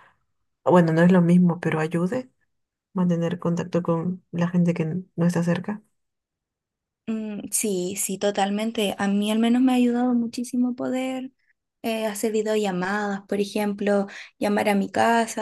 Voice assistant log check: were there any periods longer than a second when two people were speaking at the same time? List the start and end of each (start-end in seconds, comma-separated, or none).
none